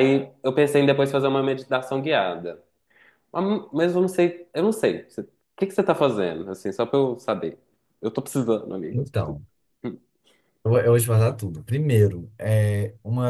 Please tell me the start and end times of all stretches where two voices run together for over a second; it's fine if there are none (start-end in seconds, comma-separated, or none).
none